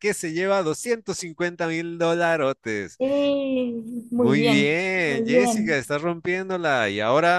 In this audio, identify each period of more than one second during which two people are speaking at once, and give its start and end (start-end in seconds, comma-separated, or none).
4.2-5.8